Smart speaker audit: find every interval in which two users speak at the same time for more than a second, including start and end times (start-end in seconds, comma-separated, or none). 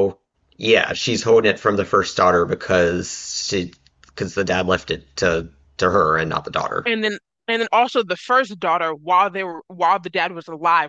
none